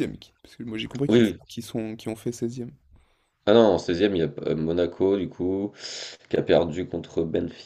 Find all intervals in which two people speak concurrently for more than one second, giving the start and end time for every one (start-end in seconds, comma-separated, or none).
none